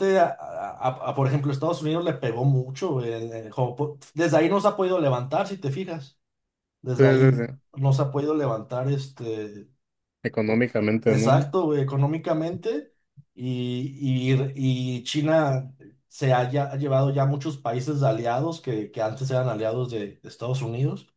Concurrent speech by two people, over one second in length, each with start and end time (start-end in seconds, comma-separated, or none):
none